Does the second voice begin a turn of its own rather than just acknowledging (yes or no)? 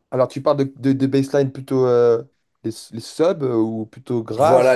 yes